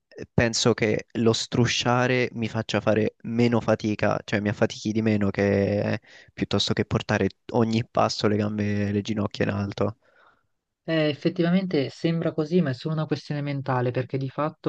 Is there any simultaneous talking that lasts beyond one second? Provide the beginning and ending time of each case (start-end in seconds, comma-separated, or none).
none